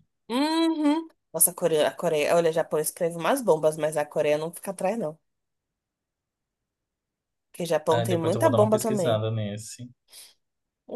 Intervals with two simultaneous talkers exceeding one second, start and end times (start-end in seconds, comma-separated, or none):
7.9-9.2